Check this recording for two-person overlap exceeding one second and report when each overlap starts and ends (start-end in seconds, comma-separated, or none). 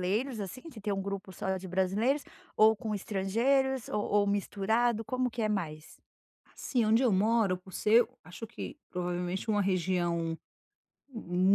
none